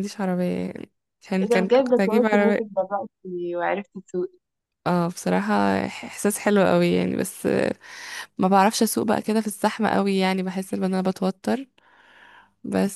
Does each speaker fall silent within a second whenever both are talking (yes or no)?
no